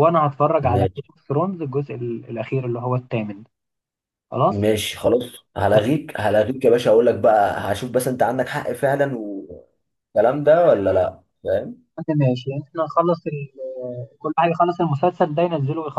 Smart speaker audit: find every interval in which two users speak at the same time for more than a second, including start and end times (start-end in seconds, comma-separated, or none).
none